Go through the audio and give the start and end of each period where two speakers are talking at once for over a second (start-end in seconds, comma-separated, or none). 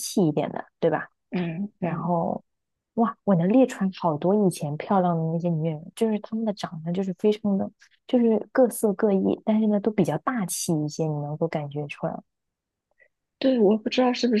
none